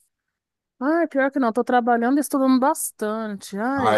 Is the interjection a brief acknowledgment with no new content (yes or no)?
yes